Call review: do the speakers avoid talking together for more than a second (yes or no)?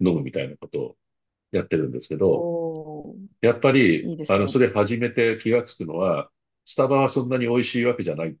yes